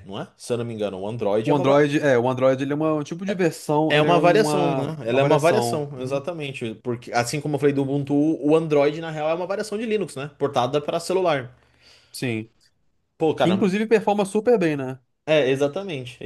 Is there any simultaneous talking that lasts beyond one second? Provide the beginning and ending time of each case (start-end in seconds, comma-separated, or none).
3.9-6.2